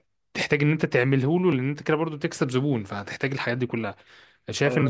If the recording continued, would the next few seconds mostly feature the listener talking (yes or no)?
no